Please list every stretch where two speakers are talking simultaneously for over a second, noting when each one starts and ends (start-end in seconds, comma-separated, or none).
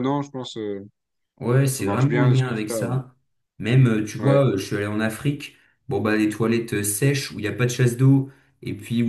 1.7-3.0